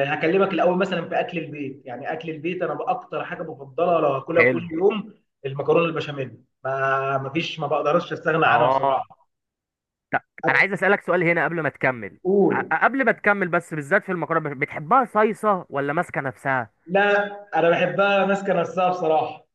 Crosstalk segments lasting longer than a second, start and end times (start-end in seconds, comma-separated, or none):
none